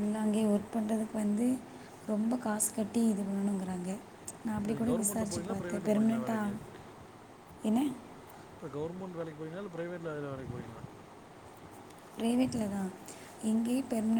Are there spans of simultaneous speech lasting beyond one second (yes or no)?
yes